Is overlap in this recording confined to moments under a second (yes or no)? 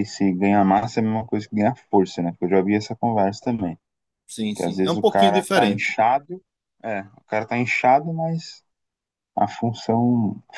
no